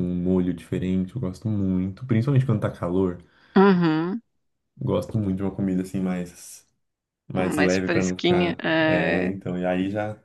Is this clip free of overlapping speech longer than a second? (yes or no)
no